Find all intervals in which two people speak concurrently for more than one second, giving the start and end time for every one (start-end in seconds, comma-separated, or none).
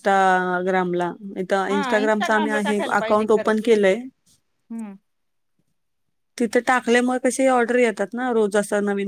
1.7-3.7